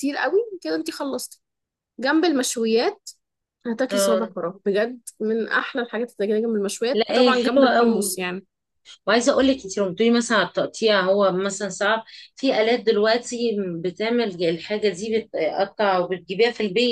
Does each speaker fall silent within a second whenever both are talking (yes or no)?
no